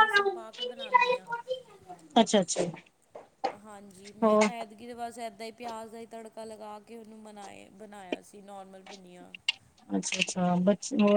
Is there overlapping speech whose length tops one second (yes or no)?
no